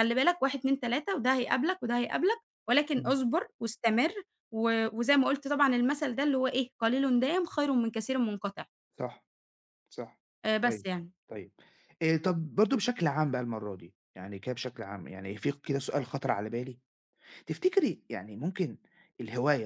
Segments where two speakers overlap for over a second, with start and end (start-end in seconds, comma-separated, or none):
none